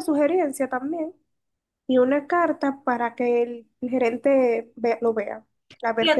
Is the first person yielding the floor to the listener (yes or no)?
yes